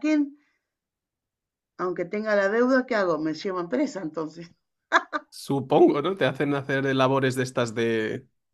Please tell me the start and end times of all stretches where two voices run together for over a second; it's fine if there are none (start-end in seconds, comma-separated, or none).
none